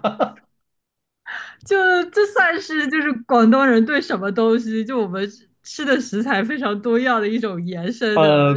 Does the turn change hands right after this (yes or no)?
yes